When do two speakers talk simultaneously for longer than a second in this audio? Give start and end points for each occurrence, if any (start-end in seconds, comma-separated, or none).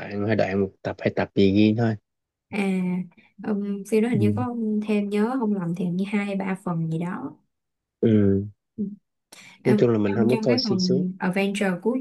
9.7-11.0